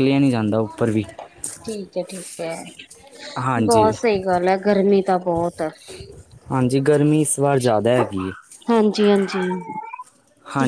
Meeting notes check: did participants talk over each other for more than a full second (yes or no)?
no